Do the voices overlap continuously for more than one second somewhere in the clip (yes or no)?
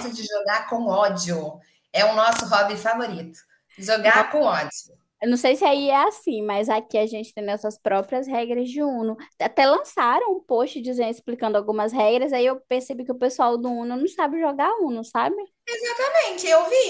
no